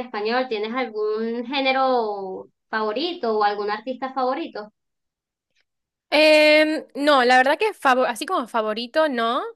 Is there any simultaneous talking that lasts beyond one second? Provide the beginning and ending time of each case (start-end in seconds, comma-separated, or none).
none